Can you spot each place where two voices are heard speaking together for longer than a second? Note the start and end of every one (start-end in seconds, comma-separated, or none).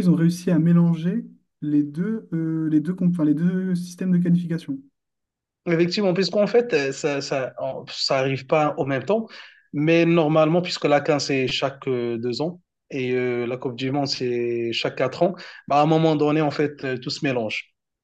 none